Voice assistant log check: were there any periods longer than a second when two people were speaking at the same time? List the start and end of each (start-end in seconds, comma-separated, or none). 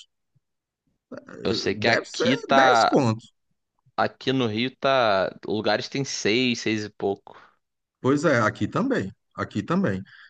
1.5-3.0